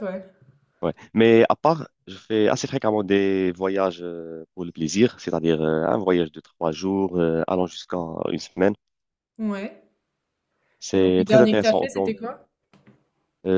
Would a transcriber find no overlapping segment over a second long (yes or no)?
no